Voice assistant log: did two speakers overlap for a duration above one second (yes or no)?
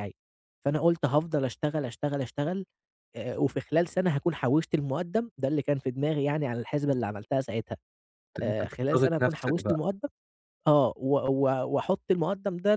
yes